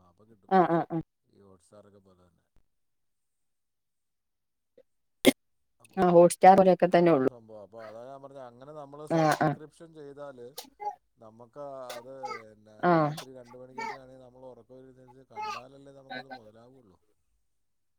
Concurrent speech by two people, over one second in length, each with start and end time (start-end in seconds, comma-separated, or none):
none